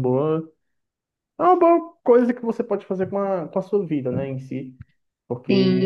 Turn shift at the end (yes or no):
yes